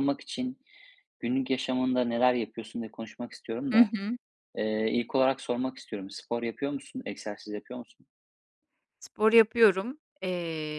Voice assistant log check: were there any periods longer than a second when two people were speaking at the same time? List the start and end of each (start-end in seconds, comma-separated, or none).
none